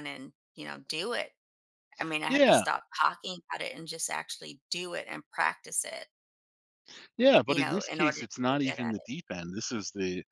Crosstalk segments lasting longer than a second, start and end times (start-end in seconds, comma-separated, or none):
7.5-9.1